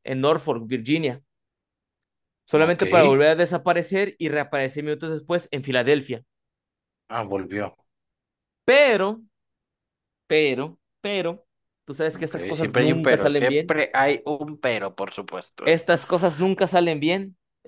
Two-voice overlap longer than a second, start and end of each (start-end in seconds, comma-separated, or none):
12.1-13.8